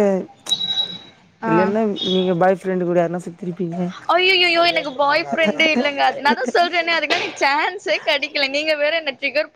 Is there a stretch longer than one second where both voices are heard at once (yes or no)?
no